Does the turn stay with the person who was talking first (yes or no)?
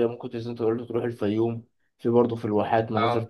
yes